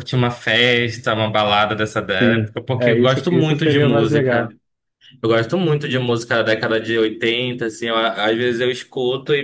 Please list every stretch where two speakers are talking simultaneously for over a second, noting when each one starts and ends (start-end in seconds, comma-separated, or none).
2.2-4.5